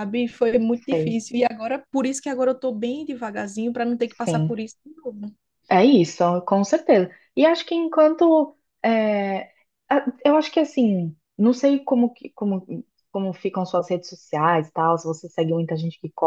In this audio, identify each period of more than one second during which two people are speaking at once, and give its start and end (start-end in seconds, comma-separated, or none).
none